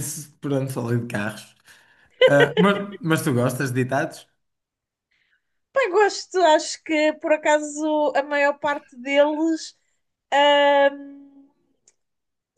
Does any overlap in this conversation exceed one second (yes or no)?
no